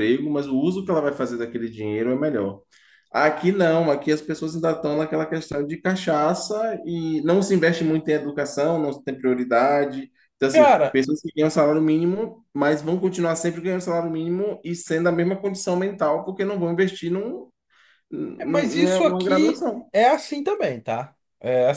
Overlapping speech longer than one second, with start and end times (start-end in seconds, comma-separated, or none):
18.4-19.9